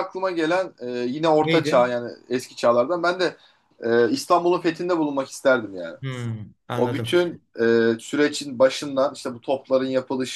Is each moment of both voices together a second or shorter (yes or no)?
yes